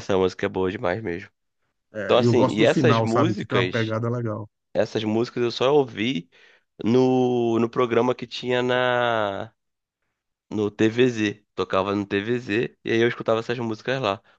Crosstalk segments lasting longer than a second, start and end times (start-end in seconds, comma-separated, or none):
2.0-3.9